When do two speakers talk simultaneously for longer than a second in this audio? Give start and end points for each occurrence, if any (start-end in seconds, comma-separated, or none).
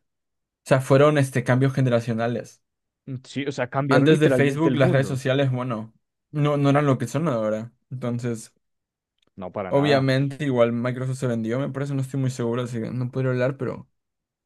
3.9-5.2